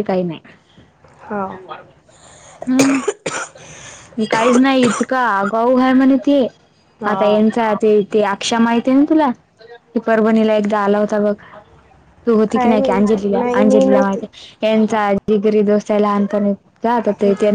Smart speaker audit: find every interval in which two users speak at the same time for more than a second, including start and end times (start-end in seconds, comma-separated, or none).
12.5-14.2